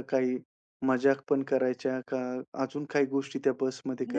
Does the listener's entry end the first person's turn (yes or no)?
yes